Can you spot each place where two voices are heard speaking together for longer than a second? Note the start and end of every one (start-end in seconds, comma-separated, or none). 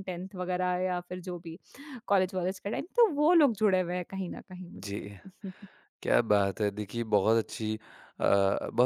none